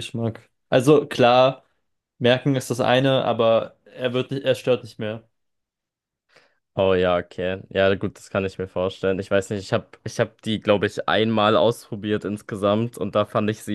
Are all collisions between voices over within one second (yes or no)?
yes